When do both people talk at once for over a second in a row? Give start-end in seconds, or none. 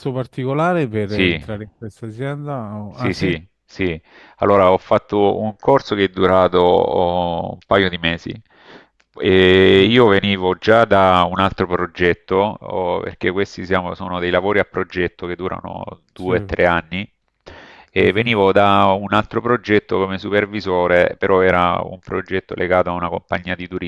none